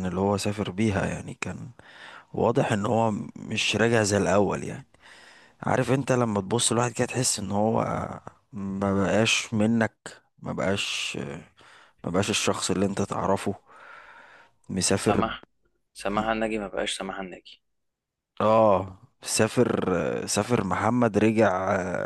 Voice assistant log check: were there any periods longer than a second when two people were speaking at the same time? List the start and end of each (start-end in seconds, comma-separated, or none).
none